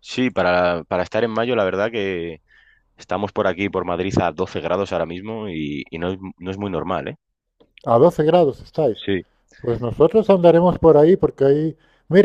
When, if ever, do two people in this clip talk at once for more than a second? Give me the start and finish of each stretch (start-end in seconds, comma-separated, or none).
none